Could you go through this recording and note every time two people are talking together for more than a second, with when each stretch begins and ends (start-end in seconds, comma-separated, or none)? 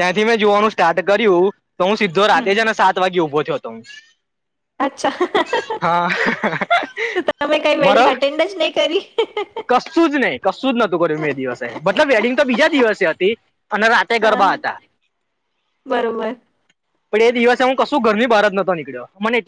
none